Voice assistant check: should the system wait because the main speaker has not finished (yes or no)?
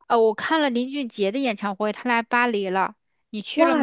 no